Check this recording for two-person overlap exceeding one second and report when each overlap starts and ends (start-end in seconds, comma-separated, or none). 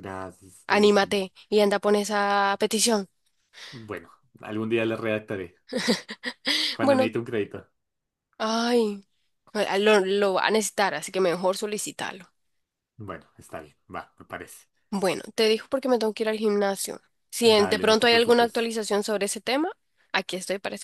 17.4-18.7